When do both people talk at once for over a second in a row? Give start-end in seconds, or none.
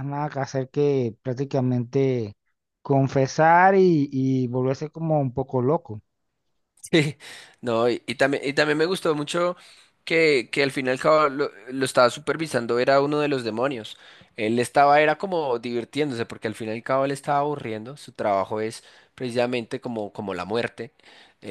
none